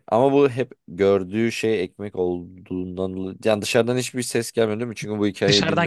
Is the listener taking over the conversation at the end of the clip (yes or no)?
yes